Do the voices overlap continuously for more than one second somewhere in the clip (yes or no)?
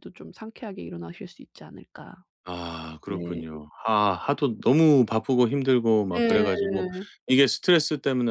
no